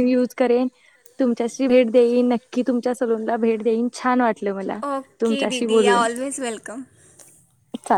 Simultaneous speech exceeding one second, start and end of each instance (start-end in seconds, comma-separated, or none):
none